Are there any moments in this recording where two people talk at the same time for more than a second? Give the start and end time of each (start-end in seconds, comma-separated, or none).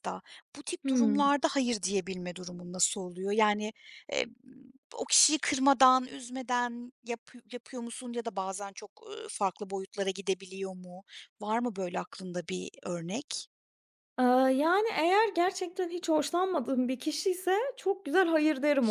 none